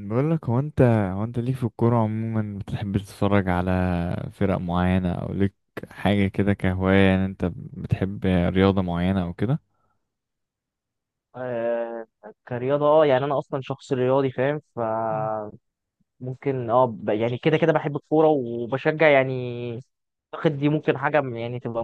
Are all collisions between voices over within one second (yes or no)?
yes